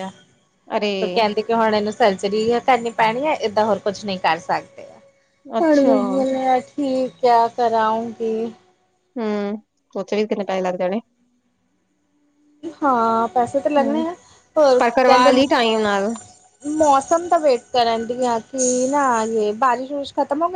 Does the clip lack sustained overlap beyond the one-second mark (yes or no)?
yes